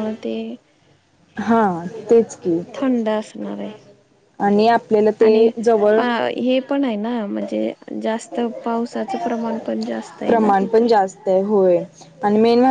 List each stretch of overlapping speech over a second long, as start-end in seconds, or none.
none